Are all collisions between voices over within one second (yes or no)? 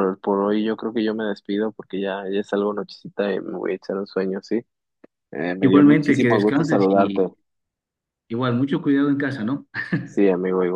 no